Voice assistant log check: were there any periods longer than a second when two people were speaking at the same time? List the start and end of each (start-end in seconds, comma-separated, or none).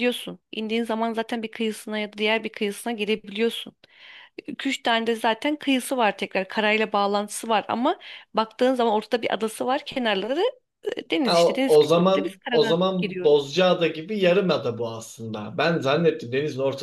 11.2-13.6